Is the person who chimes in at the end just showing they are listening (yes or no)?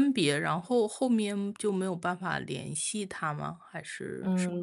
no